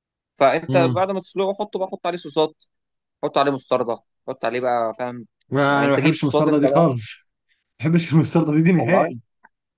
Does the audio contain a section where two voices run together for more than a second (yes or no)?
yes